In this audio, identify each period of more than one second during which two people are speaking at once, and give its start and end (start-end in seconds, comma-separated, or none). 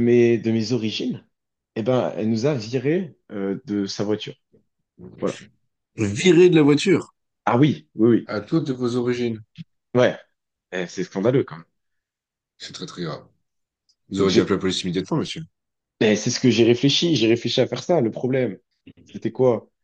none